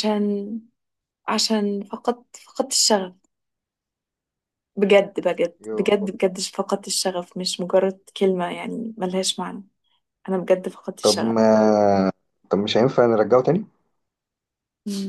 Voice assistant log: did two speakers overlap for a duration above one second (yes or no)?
no